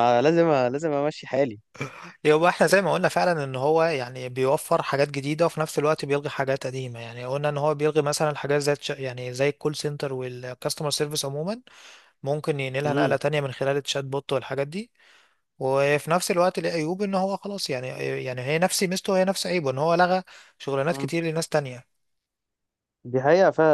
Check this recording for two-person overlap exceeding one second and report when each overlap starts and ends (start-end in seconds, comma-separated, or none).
none